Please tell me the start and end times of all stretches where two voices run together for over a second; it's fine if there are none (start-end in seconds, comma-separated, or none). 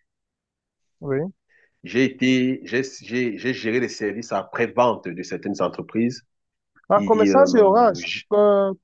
7.0-8.2